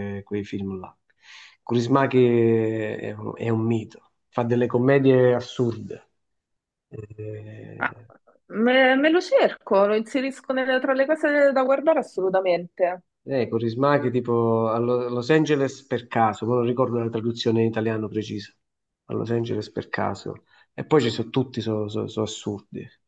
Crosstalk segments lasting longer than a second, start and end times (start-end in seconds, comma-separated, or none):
none